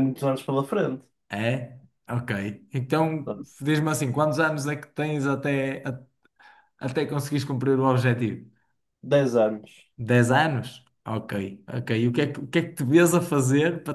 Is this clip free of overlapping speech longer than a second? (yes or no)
yes